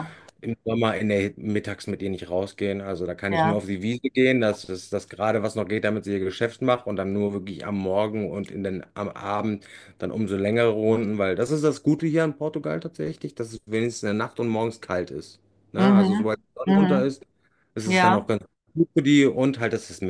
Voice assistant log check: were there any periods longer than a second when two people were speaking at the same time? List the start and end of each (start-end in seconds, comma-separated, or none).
15.8-17.1